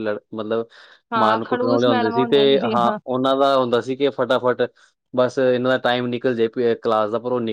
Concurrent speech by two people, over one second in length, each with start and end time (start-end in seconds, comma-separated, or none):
1.2-3.0